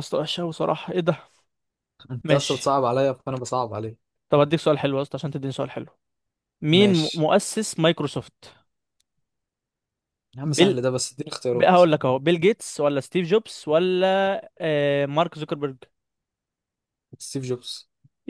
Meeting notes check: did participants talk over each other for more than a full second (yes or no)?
no